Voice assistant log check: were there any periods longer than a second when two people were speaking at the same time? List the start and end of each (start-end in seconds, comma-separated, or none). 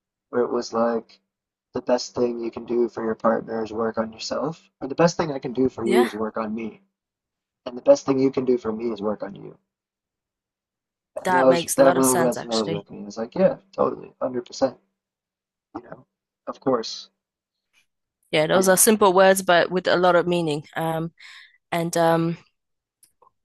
11.2-12.9